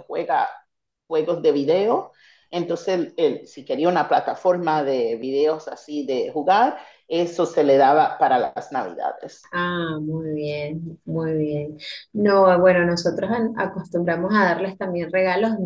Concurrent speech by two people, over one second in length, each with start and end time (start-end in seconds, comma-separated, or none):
none